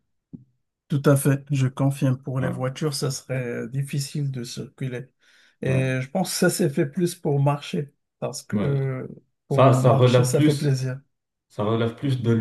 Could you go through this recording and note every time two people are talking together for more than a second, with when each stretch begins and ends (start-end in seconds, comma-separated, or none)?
9.5-10.8